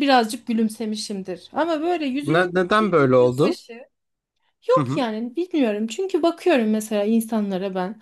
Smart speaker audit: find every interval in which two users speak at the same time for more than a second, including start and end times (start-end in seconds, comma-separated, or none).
2.2-3.6